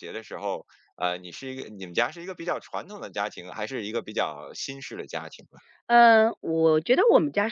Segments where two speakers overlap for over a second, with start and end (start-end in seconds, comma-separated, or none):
none